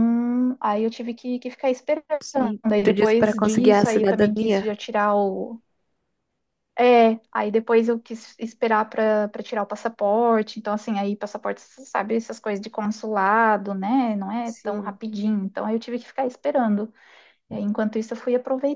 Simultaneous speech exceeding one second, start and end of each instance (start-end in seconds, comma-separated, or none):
2.7-4.7